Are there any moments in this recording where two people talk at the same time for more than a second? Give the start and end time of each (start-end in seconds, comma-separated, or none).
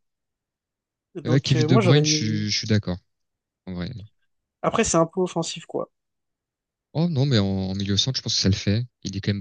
1.2-2.5